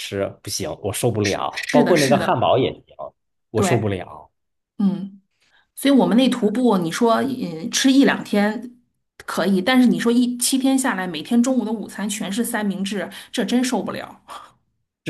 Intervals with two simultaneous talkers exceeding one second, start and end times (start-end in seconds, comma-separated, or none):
1.2-2.5